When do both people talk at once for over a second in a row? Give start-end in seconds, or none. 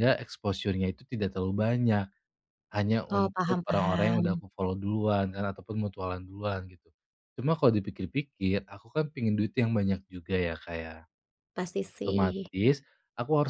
3.1-4.4